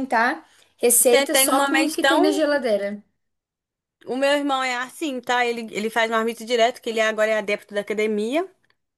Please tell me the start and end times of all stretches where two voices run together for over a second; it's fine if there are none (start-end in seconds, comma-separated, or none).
1.1-2.4